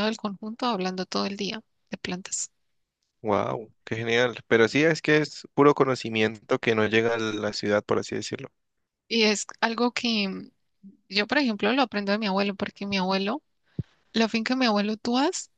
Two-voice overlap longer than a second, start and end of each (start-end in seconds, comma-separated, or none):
none